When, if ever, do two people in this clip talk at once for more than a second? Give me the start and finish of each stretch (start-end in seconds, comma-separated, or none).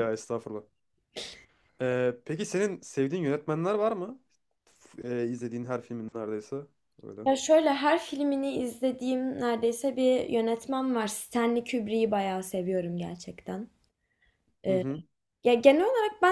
none